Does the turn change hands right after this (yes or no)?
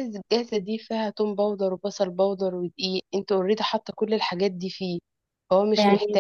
yes